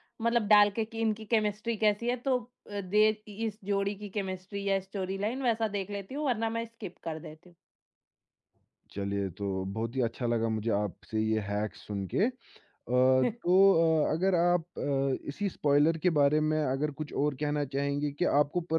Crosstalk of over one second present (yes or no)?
no